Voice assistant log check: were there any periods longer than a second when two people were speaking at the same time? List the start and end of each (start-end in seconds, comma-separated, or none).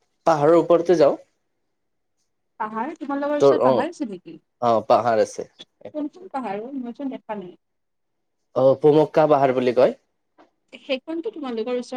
none